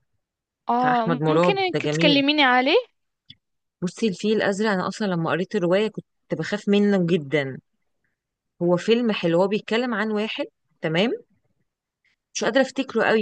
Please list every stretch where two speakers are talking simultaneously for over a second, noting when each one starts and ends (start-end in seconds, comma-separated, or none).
0.8-2.2